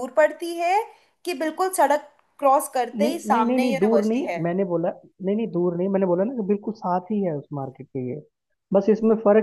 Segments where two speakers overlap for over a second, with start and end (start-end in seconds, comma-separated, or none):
3.0-4.4